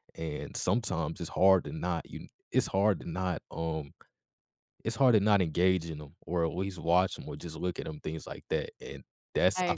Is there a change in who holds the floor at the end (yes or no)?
no